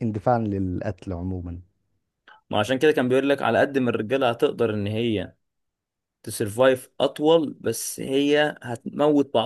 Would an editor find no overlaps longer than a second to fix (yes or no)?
yes